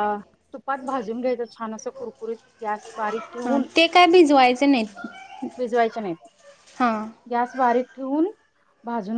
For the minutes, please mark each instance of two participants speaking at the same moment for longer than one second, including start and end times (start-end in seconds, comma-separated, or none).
none